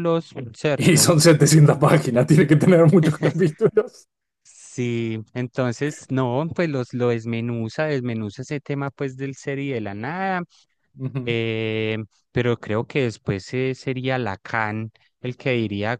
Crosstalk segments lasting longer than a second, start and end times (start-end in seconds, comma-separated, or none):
none